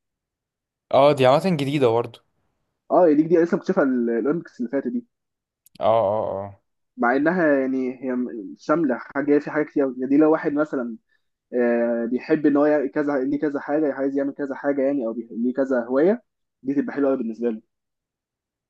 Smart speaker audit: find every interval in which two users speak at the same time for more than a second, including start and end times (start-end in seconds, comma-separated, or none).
none